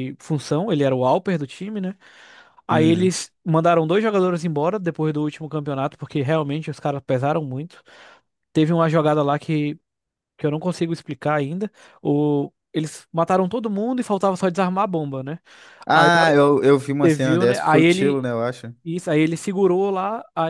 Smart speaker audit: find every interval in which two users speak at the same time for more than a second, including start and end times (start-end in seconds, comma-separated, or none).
17.0-18.3